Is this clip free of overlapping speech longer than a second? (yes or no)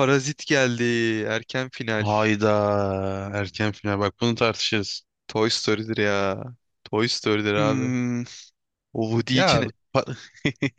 yes